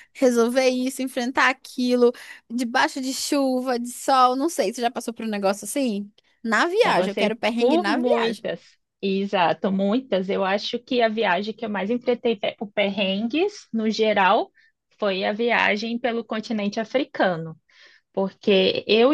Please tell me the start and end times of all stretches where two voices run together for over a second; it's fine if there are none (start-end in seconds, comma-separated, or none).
6.8-8.4